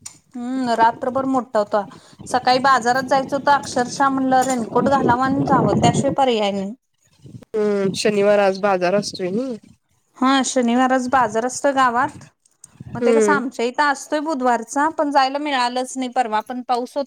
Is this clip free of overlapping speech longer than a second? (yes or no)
yes